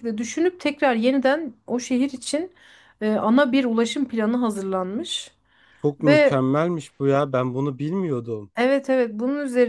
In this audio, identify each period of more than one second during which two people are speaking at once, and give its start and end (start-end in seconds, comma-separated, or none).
none